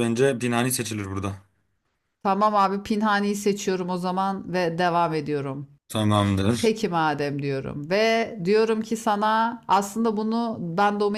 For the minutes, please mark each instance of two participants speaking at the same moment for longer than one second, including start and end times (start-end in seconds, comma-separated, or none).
none